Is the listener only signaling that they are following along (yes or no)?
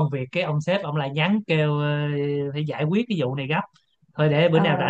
yes